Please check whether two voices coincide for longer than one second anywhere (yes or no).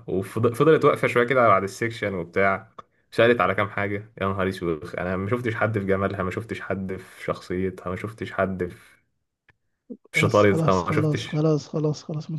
yes